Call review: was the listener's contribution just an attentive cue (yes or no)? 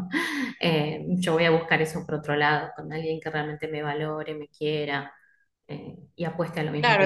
no